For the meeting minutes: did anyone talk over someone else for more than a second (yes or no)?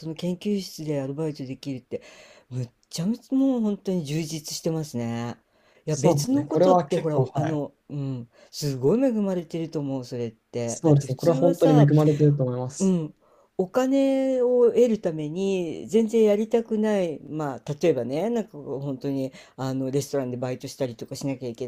yes